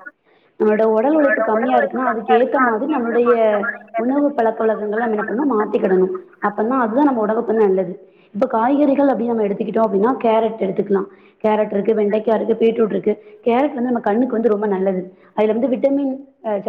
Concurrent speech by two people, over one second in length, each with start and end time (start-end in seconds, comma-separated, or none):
1.2-3.3